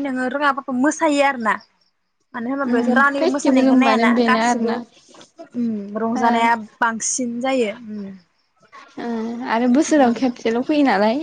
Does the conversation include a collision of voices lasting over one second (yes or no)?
yes